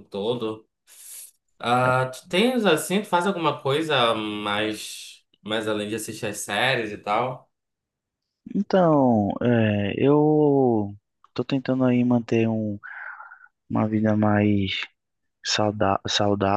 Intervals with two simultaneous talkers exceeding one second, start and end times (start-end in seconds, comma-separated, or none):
none